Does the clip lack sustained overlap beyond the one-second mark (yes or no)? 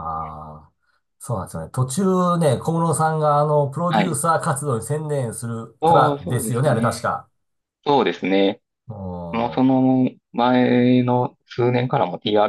no